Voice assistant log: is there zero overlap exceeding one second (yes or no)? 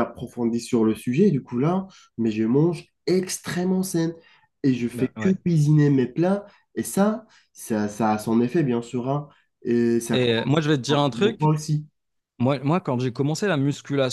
no